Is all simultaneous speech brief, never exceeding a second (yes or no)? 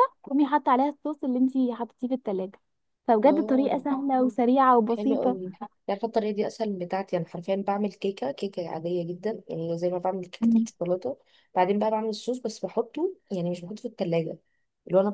yes